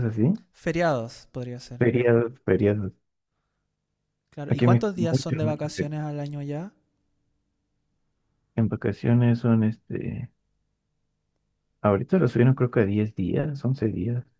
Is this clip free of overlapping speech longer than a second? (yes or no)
no